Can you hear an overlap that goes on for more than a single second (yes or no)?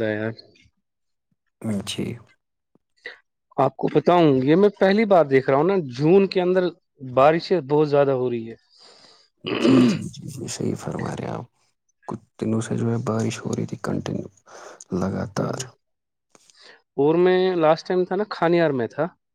no